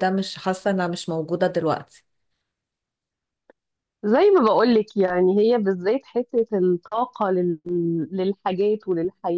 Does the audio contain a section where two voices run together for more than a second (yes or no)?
no